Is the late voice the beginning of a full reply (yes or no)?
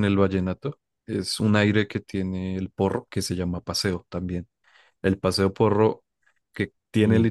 no